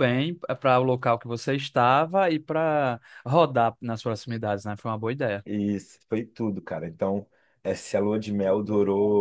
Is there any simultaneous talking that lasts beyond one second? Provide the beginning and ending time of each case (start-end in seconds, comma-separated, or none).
none